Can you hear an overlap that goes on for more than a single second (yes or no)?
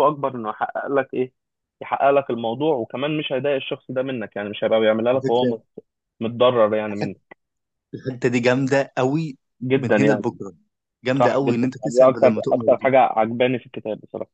yes